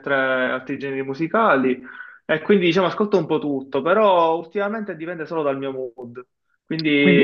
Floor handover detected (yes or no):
no